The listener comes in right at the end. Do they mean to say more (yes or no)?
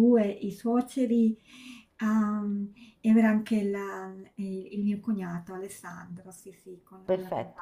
yes